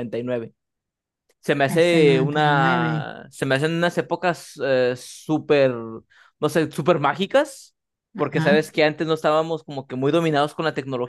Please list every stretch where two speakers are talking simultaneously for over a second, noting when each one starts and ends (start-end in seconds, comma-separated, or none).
1.7-3.1